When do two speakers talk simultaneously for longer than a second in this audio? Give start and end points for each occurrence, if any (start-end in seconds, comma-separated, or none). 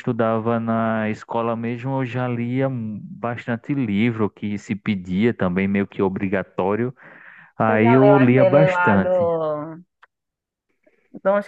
7.7-9.3